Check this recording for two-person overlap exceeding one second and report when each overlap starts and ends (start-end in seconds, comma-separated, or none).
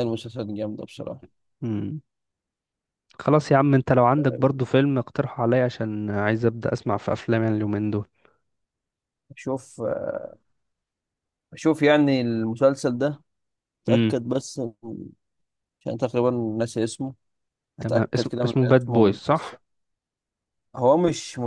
17.8-19.6